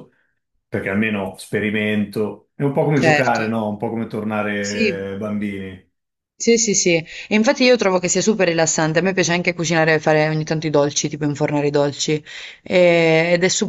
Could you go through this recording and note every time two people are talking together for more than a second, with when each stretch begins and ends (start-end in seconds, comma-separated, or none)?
none